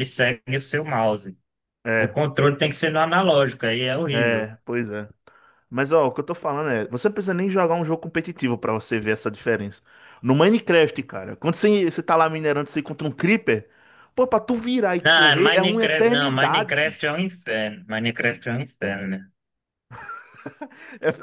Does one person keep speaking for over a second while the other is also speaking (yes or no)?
yes